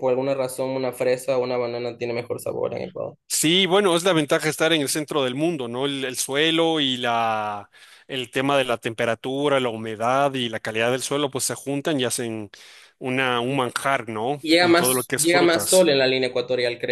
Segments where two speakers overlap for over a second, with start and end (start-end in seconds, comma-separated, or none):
14.4-16.0